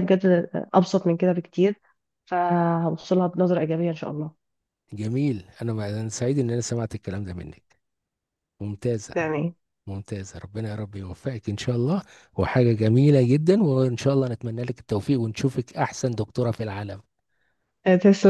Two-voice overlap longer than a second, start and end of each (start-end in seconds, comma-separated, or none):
none